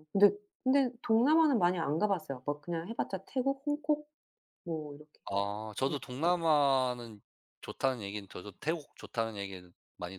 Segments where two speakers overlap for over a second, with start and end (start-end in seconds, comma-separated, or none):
none